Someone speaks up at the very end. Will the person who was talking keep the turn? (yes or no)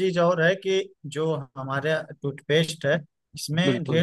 yes